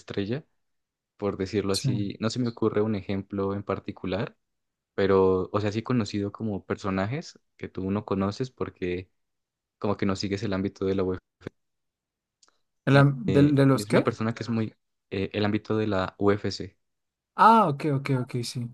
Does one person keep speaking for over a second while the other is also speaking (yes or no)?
no